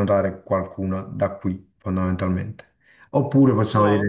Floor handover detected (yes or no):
no